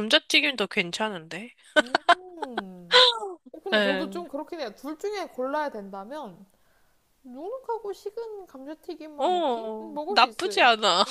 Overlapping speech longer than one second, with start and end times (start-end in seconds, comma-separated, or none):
9.2-10.6